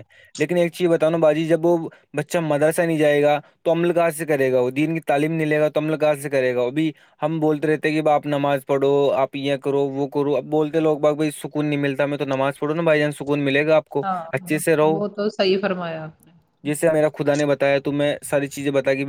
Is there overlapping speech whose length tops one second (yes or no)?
no